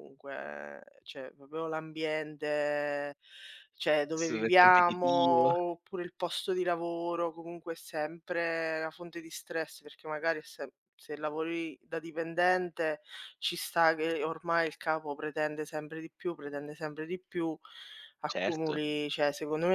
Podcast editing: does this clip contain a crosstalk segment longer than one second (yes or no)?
yes